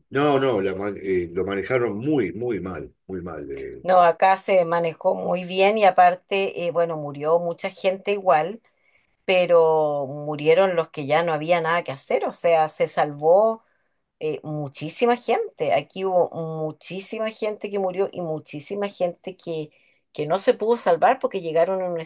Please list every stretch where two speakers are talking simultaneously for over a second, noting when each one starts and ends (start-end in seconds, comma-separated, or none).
none